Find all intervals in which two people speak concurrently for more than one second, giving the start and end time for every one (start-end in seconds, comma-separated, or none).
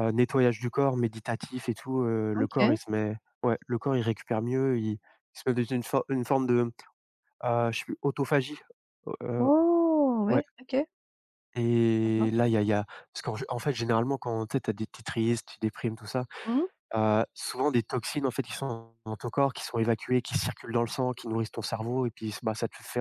none